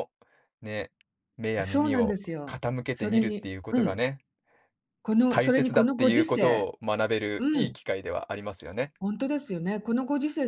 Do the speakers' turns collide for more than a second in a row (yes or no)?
yes